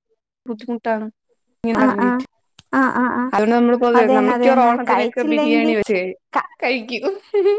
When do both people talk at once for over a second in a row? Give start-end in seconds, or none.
4.0-5.7